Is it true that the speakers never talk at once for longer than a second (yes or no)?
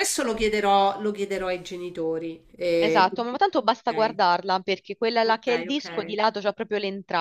no